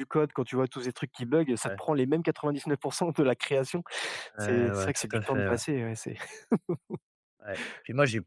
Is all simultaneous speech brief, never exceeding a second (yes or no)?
no